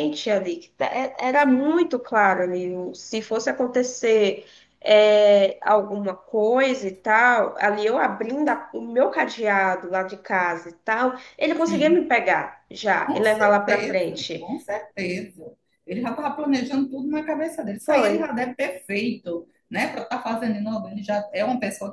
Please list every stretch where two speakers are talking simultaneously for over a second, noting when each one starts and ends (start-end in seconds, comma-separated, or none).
13.0-14.5